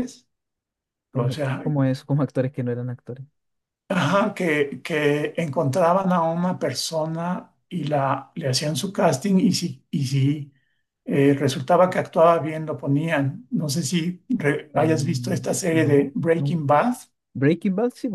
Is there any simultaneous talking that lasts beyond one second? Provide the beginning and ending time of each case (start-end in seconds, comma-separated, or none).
14.7-16.6